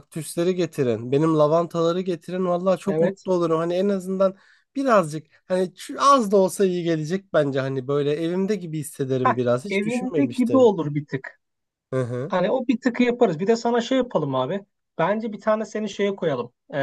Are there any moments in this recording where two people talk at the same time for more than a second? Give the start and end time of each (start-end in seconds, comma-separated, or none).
9.2-10.7